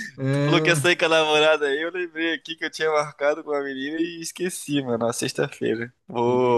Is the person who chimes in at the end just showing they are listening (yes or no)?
yes